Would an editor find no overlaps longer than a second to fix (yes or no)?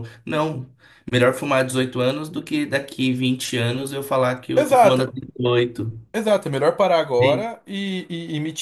yes